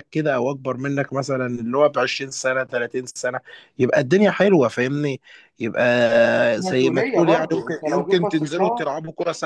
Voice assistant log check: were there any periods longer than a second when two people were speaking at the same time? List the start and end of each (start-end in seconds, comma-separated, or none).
6.6-8.9